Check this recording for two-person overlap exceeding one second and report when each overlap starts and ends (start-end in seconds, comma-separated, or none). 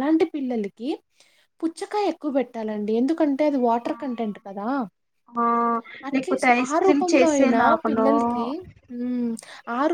6.1-8.1